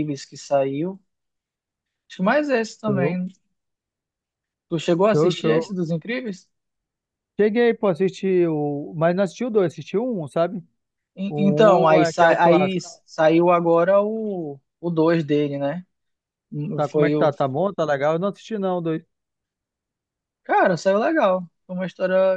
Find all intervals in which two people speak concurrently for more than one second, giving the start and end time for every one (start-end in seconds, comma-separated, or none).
11.3-12.9